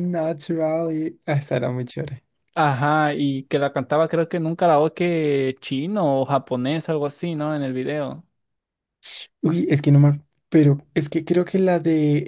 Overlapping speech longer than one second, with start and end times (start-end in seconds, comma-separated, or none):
none